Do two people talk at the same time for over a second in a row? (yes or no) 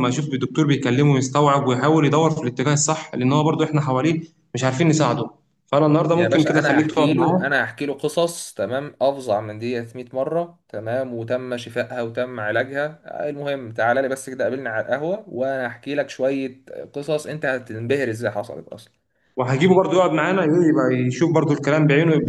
yes